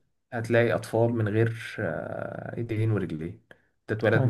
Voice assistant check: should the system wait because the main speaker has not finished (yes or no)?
yes